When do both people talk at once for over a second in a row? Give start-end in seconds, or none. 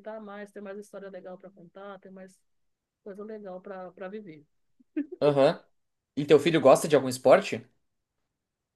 none